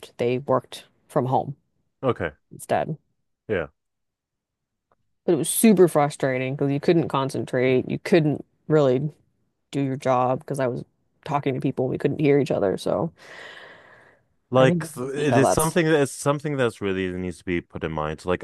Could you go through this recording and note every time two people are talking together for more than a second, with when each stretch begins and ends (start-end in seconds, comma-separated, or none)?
14.6-15.8